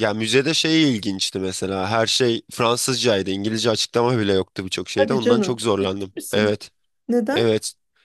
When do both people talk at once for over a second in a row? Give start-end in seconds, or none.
5.0-6.5